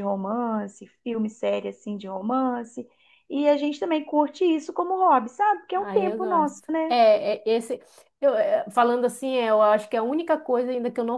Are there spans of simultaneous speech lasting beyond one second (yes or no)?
yes